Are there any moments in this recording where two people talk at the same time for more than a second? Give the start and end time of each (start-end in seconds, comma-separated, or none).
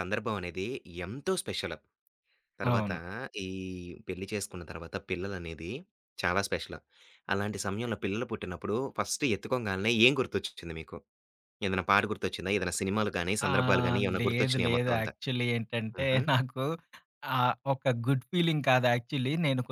13.5-15.1